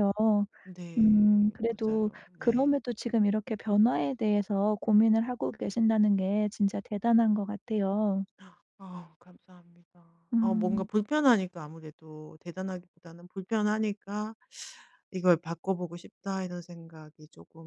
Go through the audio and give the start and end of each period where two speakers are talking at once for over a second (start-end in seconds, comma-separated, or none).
1.0-2.8